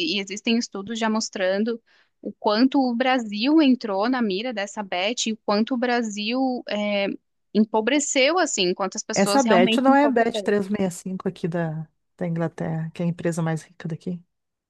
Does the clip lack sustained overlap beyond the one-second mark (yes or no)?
no